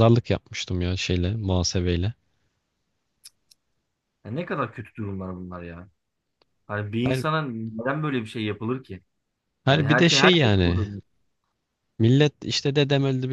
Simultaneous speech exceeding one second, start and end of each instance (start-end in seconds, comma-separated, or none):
9.7-10.9